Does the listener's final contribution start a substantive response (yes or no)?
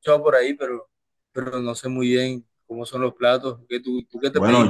yes